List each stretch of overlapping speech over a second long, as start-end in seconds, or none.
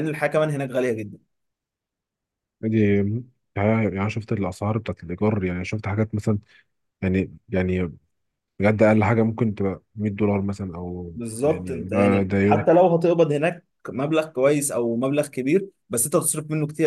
11.1-12.7